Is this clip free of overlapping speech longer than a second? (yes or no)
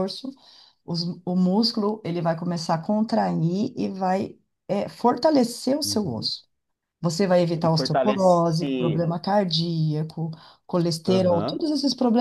no